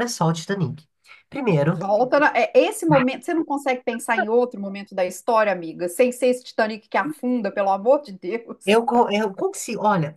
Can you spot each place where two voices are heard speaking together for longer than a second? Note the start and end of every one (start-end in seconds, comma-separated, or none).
none